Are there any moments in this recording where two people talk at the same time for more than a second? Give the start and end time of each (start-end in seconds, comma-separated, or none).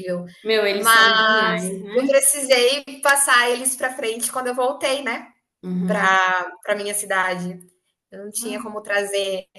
0.7-2.2